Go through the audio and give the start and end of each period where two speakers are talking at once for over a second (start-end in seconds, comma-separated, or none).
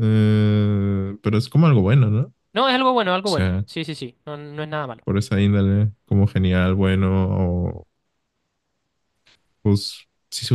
none